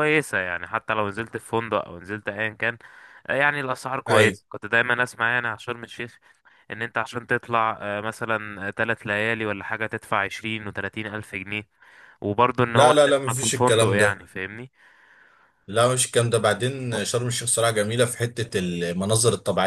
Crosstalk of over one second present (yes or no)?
yes